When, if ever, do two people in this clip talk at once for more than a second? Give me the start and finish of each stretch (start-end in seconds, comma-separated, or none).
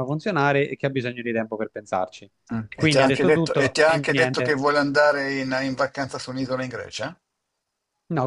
2.7-4.5